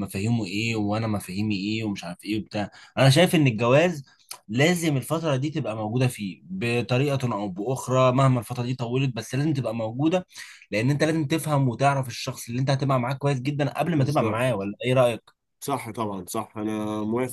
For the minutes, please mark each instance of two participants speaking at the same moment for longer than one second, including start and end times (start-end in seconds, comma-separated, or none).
none